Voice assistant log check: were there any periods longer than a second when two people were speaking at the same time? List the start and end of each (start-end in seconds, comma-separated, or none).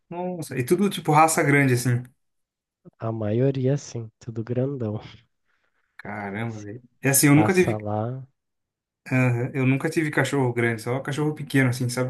none